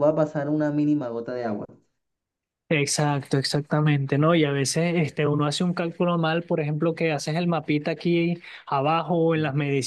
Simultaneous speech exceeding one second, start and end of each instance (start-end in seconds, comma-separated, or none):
none